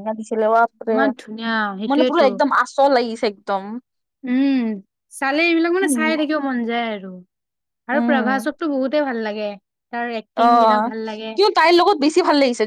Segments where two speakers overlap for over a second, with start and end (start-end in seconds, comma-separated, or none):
none